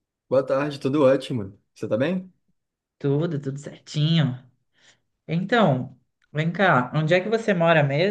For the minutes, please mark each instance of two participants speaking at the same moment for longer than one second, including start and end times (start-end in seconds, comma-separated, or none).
none